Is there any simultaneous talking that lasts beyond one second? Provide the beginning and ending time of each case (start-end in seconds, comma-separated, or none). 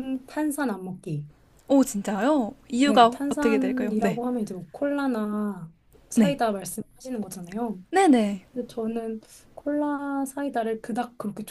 2.8-4.2